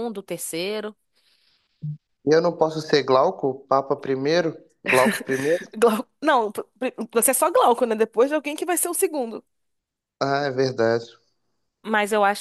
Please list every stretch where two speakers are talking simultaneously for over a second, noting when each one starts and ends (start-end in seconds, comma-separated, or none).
none